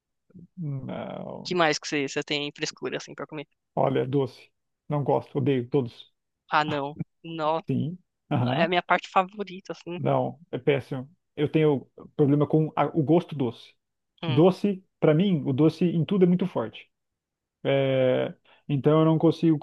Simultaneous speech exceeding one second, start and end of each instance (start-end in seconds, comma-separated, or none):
none